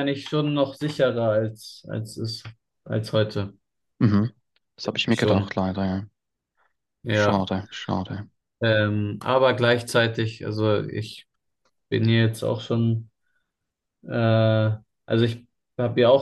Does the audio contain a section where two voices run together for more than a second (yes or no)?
no